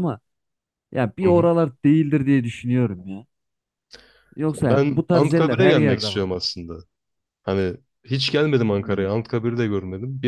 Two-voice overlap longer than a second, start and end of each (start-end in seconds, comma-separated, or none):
4.6-6.3